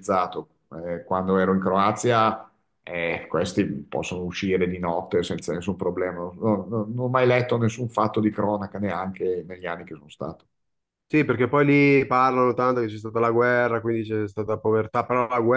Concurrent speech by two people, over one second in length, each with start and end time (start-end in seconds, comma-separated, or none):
none